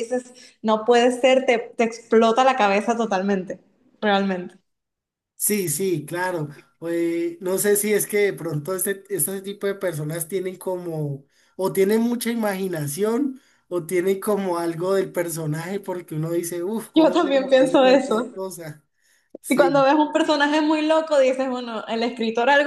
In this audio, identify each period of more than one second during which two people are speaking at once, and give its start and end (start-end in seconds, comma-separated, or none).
16.9-18.3